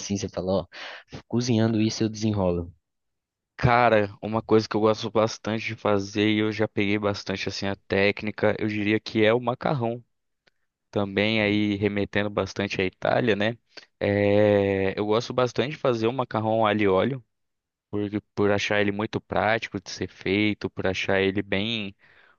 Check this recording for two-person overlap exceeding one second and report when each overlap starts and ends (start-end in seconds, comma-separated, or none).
none